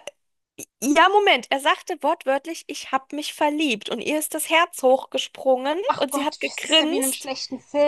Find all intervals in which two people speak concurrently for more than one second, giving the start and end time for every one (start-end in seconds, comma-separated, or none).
5.9-7.3